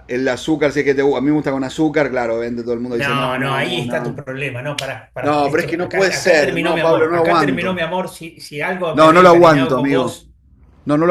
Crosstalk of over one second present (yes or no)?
yes